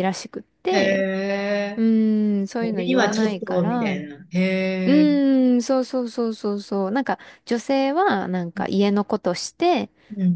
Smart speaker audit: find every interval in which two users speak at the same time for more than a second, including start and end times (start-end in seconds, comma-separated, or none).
2.6-4.0